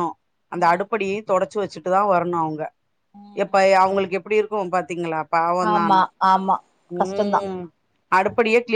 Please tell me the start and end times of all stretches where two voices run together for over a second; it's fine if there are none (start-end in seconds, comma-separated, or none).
none